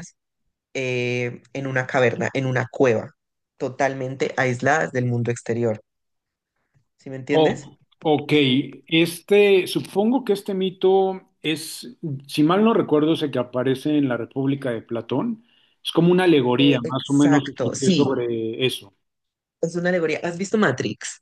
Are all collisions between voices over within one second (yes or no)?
no